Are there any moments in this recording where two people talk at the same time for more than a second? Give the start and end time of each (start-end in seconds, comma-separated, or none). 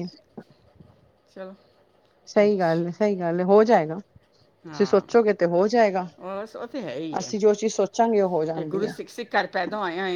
none